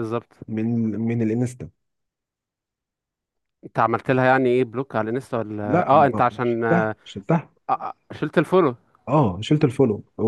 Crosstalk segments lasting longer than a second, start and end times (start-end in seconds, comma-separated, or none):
5.7-7.0